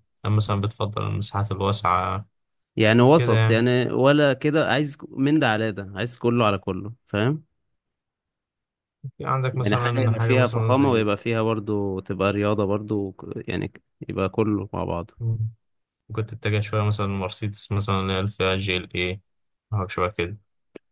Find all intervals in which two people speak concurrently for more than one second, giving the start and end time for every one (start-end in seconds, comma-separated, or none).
9.5-11.1